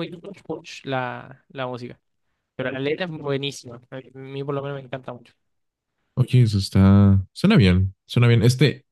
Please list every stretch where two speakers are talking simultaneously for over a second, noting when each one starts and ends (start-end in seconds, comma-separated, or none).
none